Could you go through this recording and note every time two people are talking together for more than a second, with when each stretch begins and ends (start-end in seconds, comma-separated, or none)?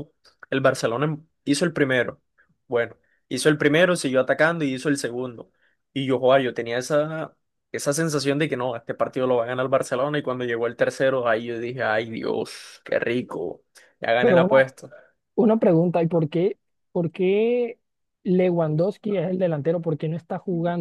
none